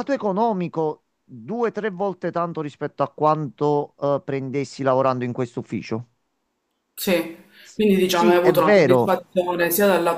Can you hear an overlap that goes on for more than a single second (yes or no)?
yes